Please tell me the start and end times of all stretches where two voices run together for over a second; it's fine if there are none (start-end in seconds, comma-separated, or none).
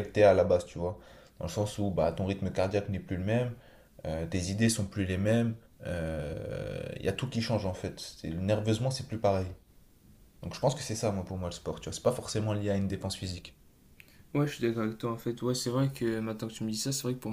none